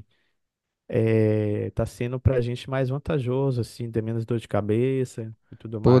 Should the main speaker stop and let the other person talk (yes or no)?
yes